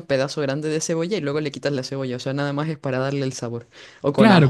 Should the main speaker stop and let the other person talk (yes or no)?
yes